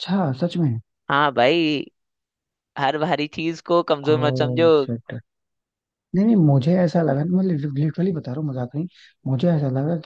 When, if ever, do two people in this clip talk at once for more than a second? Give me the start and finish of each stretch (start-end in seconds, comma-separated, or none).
none